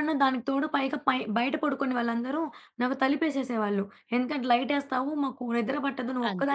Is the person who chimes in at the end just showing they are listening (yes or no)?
no